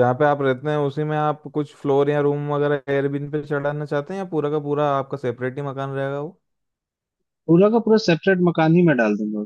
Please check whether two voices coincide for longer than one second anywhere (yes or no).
no